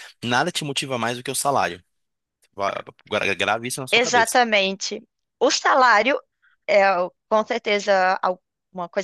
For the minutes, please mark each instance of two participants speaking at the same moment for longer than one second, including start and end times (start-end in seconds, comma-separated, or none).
none